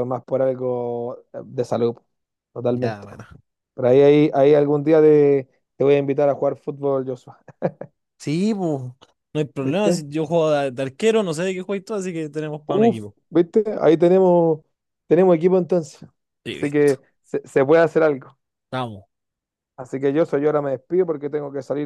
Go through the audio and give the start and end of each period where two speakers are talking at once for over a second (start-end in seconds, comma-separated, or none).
none